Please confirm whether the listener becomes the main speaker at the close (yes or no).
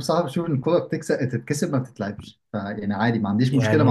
no